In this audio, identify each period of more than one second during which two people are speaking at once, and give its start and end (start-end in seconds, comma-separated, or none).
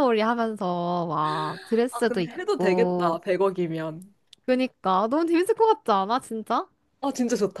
1.9-3.2